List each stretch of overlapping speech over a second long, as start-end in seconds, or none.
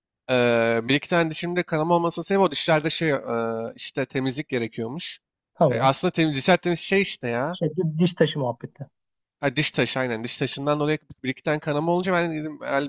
none